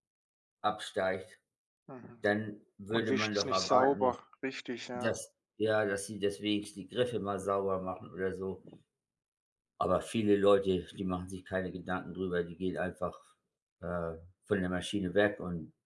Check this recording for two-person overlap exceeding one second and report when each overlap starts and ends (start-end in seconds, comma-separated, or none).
2.9-4.2